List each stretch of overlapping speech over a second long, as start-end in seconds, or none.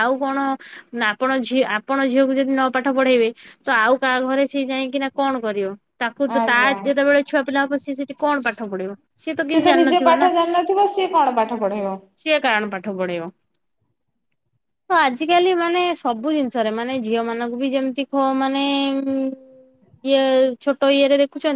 none